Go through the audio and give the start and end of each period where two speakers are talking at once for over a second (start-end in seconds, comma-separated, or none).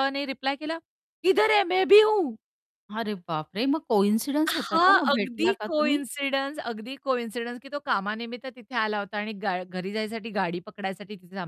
4.5-6.0